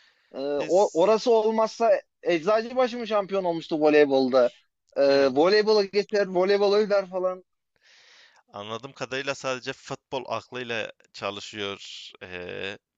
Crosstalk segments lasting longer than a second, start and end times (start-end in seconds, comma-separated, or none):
none